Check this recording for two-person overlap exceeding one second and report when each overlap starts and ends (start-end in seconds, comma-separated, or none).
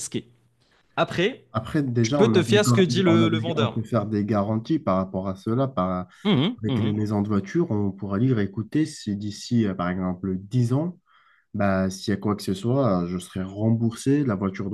2.0-3.8